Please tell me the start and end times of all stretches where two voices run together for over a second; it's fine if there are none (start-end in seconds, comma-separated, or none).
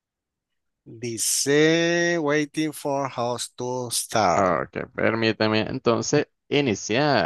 none